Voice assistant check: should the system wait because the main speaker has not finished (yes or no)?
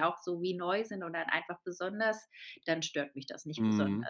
no